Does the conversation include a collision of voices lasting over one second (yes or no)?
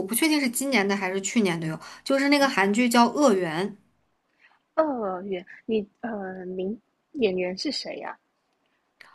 no